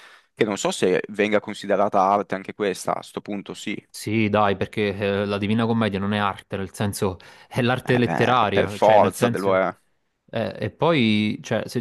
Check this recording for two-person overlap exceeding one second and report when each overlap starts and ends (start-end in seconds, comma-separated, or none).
7.8-9.6